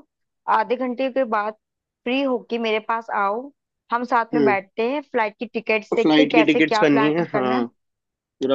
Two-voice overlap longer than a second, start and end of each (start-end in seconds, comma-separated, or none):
6.0-7.6